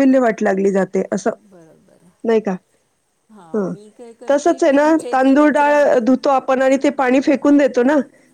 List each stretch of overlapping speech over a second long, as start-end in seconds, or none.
none